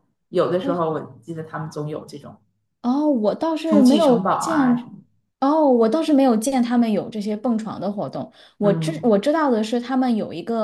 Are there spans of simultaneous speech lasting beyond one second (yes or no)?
yes